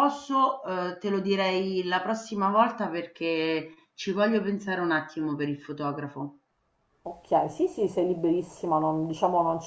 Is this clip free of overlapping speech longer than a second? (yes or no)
yes